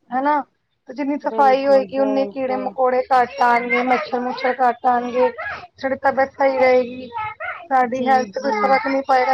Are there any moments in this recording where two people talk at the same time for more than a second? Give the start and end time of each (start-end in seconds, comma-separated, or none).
1.3-2.7